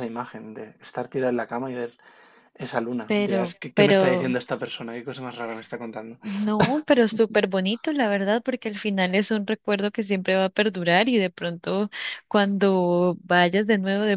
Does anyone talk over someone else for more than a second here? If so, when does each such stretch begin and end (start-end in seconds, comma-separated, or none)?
3.1-4.4